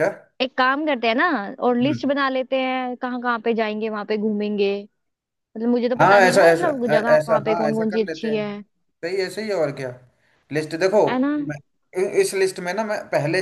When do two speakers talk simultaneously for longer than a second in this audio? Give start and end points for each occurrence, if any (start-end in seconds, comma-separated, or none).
6.0-8.4